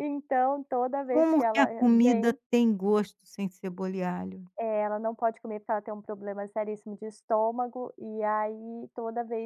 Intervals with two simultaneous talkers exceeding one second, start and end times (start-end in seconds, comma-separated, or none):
1.1-2.4